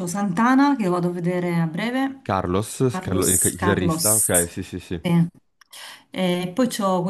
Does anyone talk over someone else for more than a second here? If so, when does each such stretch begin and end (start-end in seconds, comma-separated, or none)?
2.9-4.3